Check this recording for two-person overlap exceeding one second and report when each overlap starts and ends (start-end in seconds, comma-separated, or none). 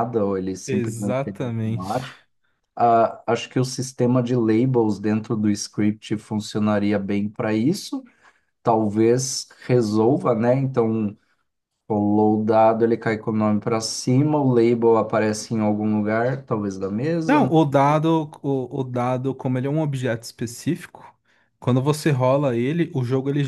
0.7-2.0